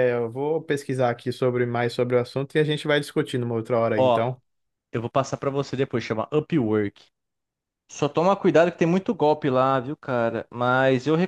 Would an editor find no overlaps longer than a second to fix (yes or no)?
yes